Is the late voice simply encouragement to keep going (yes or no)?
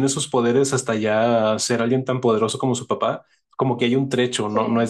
yes